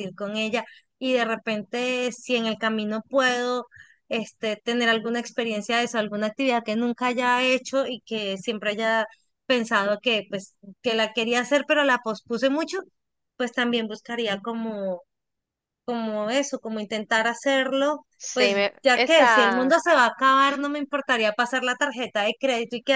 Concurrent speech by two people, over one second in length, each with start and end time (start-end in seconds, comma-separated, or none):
18.2-19.8